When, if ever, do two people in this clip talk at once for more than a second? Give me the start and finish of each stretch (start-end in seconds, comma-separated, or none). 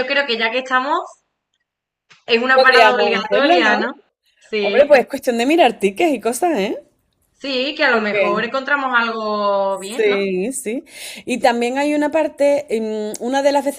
2.5-3.9